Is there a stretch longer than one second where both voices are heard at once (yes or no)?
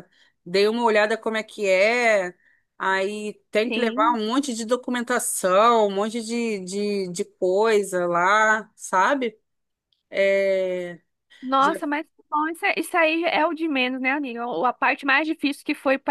no